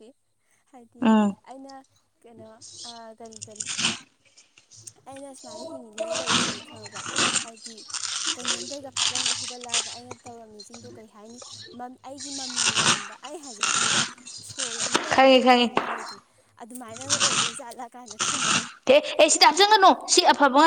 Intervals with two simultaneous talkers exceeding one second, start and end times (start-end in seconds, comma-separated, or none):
none